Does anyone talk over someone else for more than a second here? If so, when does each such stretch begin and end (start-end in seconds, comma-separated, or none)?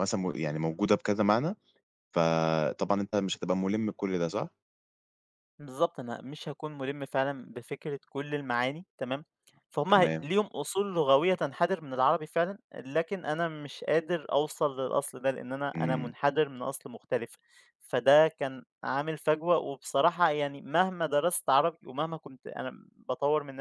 none